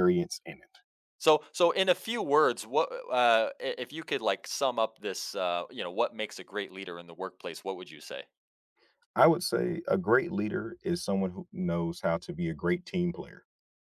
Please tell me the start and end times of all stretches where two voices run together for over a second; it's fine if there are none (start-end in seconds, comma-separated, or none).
none